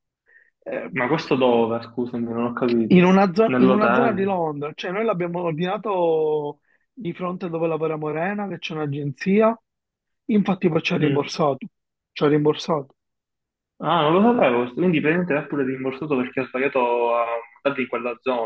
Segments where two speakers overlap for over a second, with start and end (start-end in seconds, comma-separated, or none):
2.9-4.3